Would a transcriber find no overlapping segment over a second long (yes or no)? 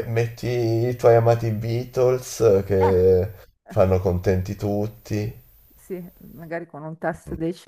yes